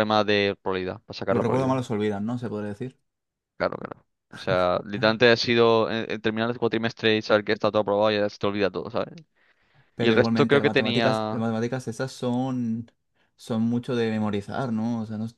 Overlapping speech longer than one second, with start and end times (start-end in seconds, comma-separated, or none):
10.0-11.5